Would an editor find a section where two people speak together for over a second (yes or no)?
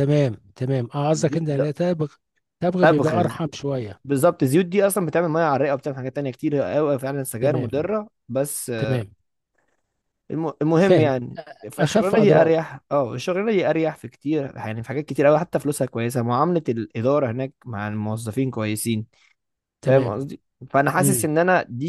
yes